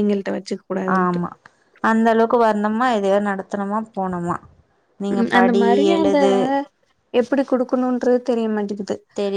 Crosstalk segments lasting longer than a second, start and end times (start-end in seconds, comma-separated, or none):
none